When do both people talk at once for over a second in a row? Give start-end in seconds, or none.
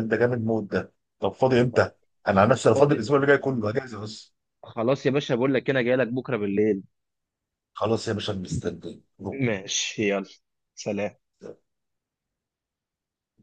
none